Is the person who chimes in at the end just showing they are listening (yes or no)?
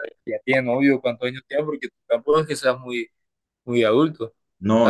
no